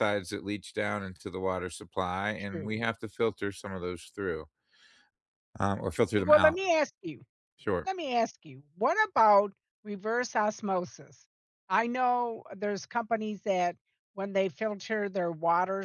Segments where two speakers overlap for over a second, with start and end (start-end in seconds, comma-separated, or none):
none